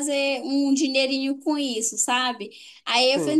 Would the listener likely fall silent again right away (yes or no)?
yes